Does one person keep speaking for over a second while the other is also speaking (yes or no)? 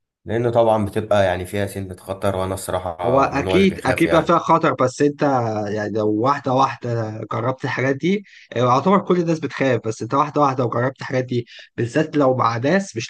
yes